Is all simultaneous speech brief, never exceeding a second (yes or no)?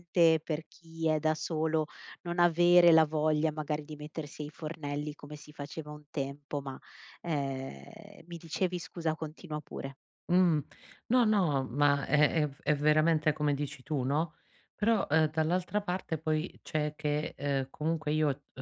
yes